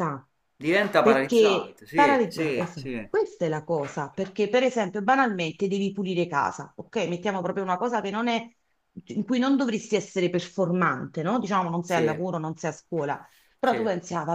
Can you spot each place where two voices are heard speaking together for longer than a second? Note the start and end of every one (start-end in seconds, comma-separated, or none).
1.0-3.1